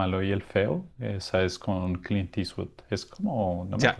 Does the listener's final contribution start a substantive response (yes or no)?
yes